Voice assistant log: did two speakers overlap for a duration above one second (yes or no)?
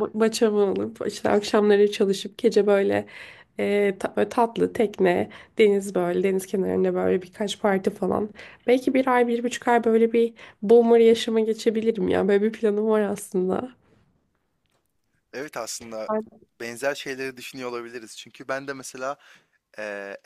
no